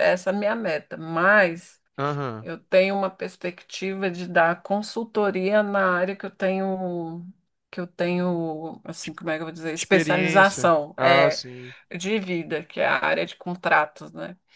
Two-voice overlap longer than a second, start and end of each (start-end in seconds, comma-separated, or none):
9.8-11.4